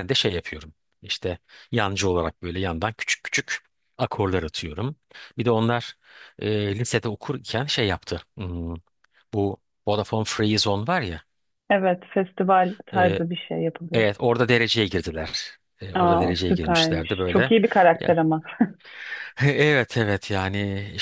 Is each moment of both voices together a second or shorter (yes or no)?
no